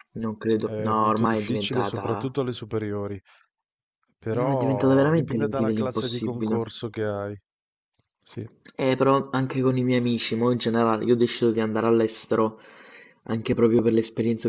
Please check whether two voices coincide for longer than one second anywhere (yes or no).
yes